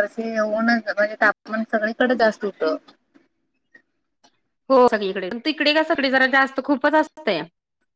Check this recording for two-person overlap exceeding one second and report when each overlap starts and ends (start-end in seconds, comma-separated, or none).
none